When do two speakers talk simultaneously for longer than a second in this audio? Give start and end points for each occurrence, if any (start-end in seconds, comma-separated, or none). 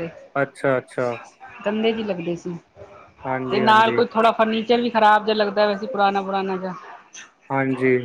none